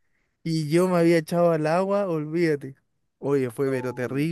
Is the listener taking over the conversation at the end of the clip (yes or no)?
no